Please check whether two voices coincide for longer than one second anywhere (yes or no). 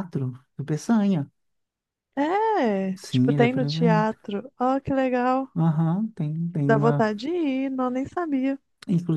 yes